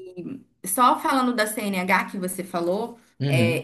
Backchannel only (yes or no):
yes